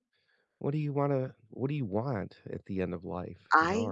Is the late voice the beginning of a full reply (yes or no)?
no